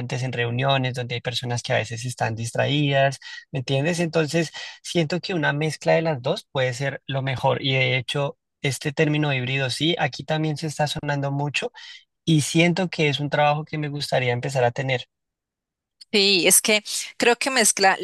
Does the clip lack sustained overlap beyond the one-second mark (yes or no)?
yes